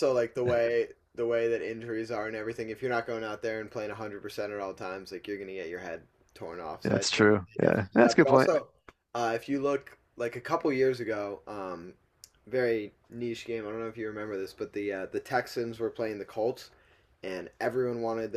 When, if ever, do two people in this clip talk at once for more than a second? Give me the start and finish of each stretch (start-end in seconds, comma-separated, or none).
6.8-8.6